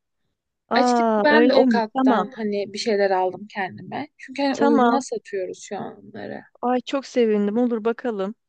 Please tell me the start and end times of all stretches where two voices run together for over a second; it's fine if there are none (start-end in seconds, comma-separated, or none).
0.7-2.3